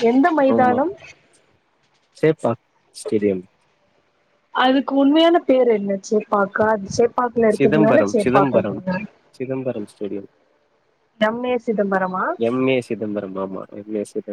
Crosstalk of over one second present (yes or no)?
yes